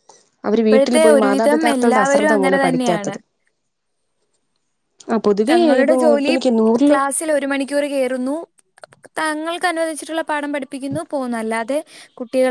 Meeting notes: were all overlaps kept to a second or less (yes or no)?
no